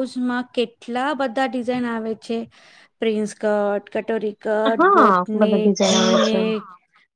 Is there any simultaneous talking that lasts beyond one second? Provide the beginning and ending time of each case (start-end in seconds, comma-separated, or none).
4.8-6.3